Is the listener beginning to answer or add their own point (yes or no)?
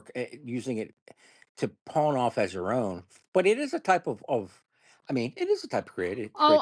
yes